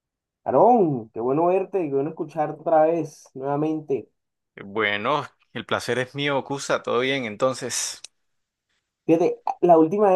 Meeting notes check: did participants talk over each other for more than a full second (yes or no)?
no